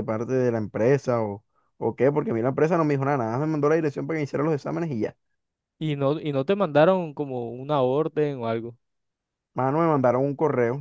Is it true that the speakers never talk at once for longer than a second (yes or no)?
yes